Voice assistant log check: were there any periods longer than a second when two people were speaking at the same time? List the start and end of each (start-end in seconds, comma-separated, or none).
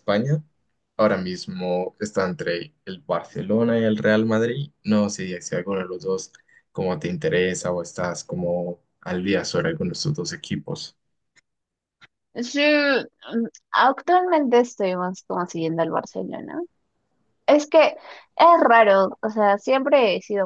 none